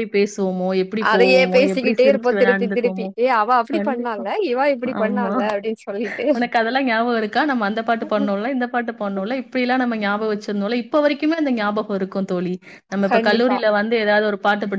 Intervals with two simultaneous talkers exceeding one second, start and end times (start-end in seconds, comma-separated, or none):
1.1-3.1